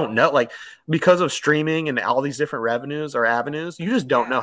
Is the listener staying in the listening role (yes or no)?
yes